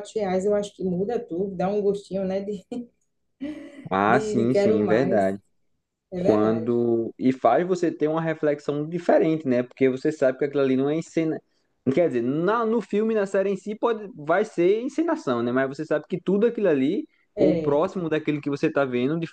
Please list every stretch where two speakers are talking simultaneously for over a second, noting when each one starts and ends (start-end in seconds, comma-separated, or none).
4.1-5.3